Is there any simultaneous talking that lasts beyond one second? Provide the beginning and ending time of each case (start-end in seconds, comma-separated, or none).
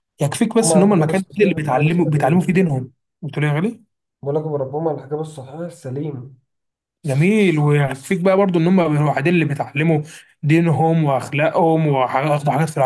0.6-2.5